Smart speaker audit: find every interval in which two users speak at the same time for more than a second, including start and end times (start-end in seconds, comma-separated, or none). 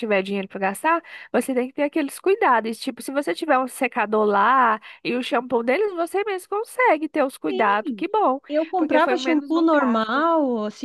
8.8-10.2